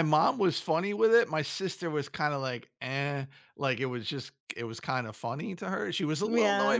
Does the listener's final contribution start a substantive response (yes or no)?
no